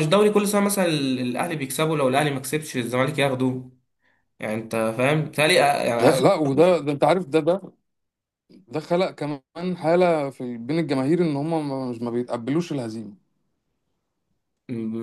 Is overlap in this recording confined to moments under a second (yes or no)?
yes